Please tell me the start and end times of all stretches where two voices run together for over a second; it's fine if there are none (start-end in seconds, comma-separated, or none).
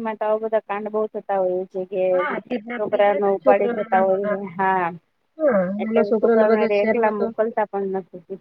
2.8-4.4